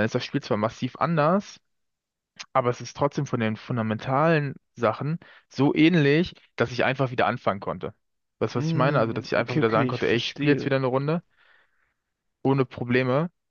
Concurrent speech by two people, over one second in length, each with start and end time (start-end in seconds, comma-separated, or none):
8.6-10.7